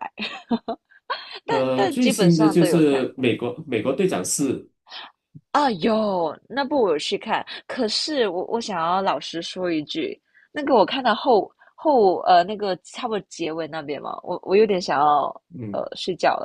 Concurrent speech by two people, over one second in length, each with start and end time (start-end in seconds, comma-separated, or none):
1.5-3.1